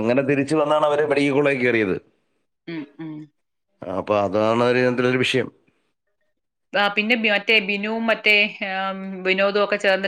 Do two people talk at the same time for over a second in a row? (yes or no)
no